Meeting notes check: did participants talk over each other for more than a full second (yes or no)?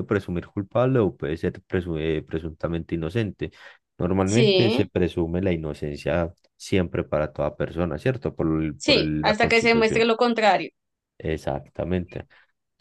yes